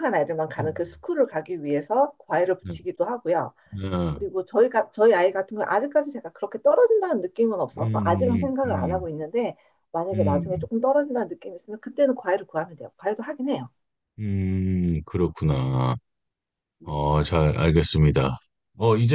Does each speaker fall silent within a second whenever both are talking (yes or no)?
no